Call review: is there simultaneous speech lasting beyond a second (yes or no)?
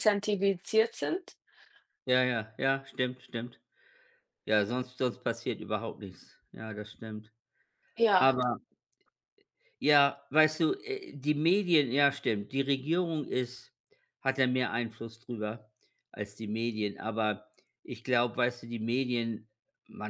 no